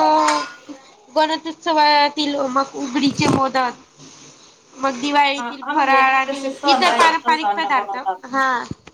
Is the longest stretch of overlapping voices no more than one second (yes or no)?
no